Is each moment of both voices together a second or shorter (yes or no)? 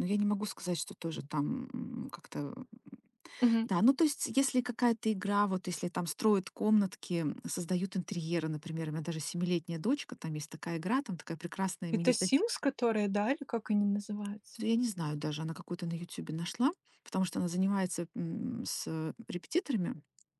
yes